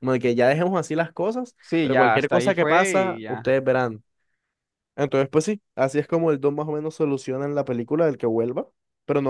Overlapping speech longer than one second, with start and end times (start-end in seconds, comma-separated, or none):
1.6-3.5